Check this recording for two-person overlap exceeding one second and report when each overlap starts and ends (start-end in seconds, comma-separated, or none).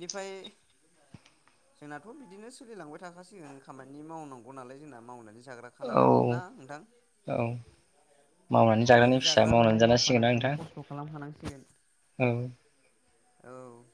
8.9-10.5